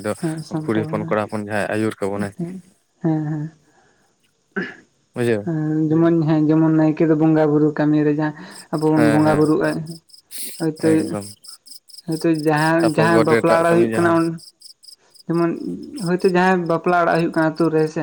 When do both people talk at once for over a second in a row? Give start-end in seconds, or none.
12.8-14.1